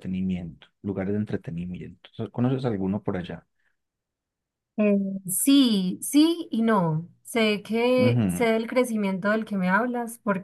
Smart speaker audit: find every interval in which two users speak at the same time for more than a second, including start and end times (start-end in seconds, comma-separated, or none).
none